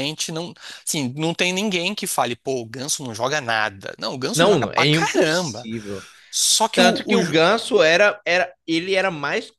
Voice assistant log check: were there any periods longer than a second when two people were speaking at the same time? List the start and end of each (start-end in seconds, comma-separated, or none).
4.3-5.7